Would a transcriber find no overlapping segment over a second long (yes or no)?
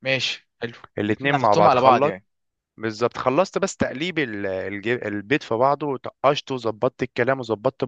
no